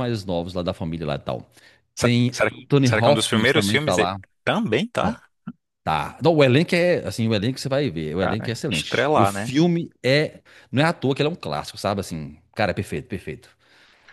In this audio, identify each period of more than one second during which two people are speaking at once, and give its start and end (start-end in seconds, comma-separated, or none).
2.0-4.2, 8.1-9.5